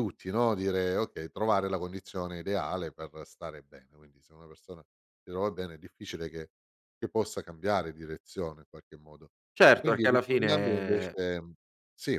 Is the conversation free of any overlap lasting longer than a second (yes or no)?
no